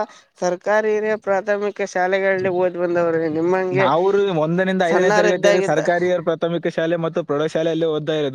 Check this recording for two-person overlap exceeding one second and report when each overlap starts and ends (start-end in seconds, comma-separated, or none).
none